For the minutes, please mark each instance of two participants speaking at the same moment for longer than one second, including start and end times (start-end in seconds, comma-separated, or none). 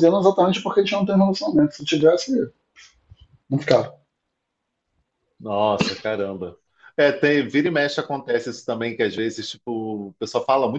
none